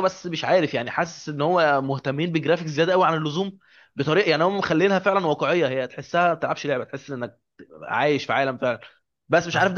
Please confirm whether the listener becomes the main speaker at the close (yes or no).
no